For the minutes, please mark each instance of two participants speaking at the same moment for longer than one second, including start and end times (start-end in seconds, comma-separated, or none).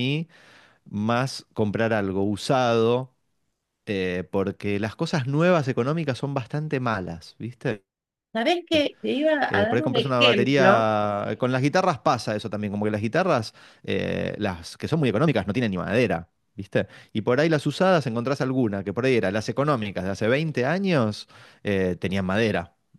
9.5-10.9